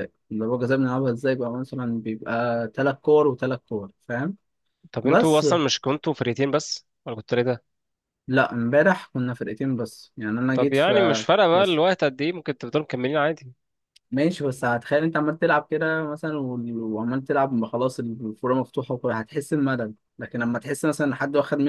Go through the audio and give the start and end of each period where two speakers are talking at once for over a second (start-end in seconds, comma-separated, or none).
10.5-11.8